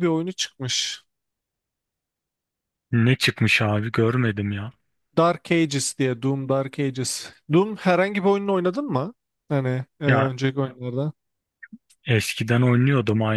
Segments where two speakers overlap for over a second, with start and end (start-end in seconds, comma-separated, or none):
none